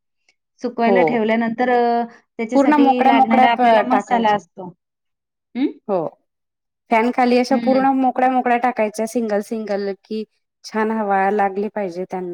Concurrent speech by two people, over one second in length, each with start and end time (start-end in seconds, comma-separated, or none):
2.5-4.4